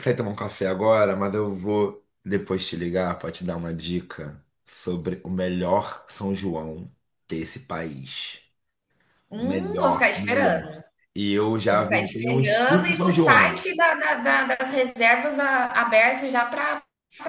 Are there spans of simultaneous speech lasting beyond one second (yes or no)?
yes